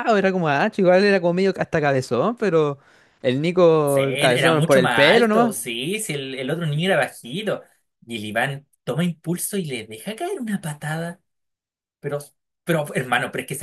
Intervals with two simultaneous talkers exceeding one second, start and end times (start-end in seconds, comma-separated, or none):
3.8-5.5